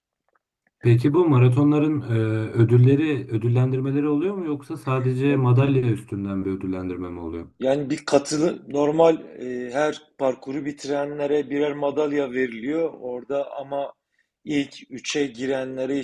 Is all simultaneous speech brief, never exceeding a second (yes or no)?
yes